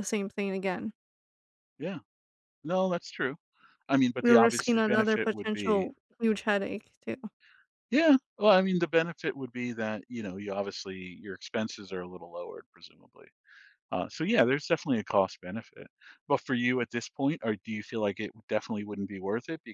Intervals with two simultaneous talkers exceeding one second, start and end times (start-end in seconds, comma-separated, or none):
4.2-5.9